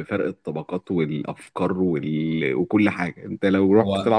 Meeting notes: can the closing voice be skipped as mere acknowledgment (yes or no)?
yes